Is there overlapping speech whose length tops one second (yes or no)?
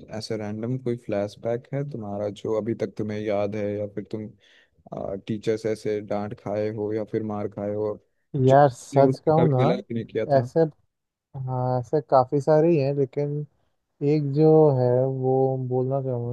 yes